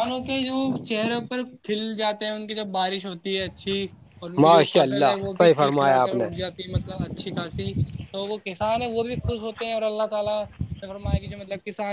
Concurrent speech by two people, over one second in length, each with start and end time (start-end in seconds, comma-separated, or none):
4.4-6.2